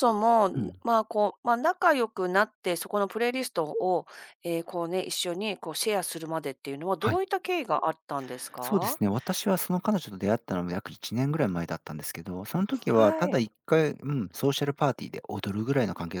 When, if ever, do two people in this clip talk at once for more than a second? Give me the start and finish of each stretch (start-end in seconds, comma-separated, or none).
none